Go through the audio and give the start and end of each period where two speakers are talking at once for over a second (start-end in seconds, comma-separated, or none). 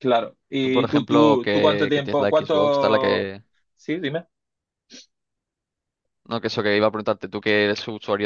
0.6-3.3